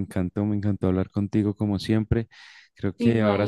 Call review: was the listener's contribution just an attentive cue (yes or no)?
yes